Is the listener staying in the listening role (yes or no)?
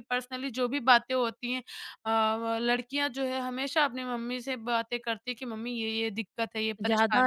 no